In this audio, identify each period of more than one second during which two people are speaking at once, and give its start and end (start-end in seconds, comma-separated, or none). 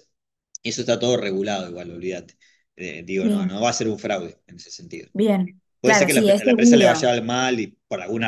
5.8-7.1